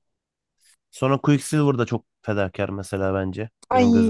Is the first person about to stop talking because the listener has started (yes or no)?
yes